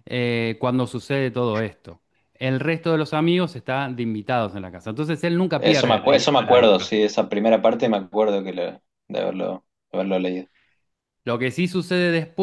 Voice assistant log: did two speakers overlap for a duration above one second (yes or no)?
yes